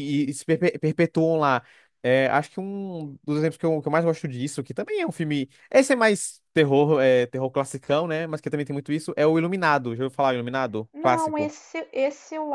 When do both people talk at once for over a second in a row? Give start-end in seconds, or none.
none